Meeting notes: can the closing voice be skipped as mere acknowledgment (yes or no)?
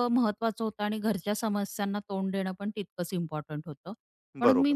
yes